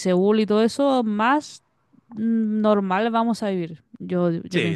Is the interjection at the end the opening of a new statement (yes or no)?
yes